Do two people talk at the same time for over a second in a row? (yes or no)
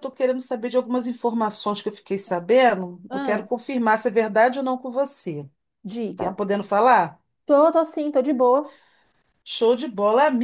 no